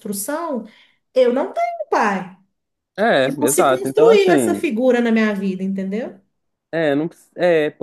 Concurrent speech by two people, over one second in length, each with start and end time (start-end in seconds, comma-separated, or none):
3.2-4.6